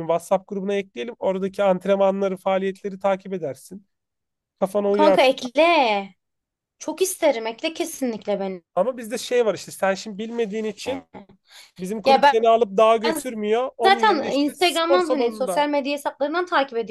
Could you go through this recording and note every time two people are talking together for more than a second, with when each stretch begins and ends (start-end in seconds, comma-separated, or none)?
13.8-15.7